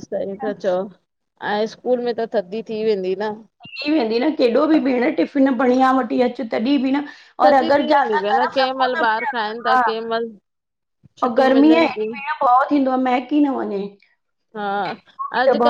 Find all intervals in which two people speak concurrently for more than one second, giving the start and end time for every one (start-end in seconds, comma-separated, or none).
7.4-9.8